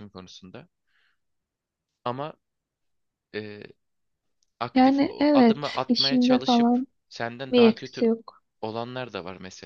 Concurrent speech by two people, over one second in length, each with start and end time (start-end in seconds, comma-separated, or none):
4.8-6.9